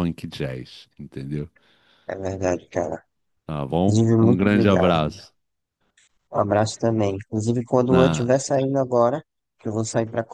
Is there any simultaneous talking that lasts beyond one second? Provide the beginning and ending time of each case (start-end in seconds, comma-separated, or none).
3.7-5.0